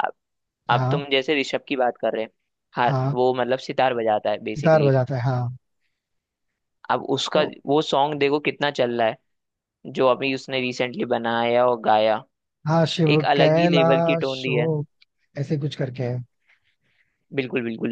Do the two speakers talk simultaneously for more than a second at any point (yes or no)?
yes